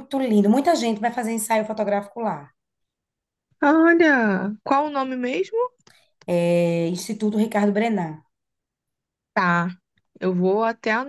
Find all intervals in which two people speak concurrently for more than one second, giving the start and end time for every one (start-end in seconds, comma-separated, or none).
none